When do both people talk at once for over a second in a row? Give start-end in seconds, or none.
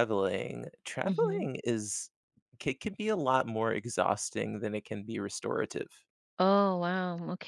none